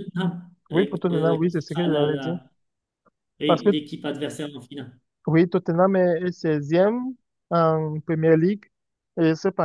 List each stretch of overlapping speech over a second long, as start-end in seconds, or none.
0.7-2.4